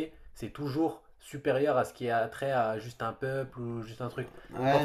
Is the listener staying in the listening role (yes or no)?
no